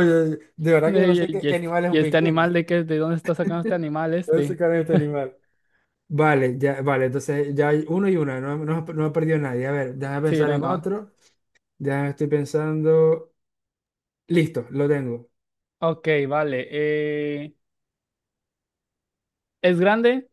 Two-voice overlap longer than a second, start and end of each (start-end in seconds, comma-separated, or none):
0.8-2.5